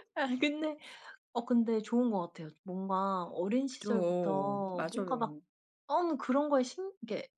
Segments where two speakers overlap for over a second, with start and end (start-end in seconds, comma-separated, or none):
3.7-5.3